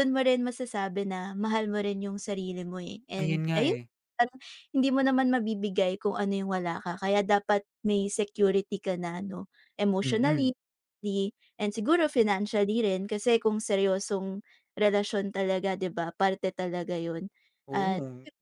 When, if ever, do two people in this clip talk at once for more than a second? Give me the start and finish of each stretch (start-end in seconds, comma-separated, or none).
none